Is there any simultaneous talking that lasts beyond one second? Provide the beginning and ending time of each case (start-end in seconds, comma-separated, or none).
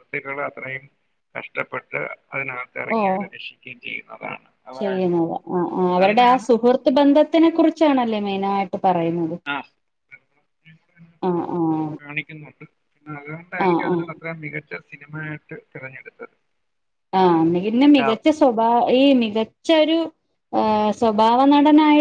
none